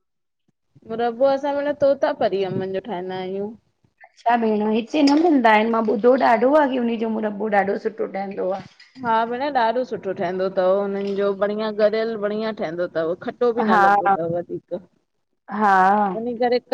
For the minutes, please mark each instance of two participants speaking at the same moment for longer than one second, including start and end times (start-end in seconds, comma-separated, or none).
none